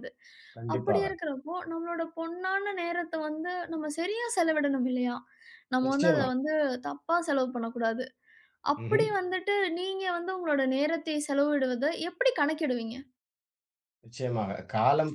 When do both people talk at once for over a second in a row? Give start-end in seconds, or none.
none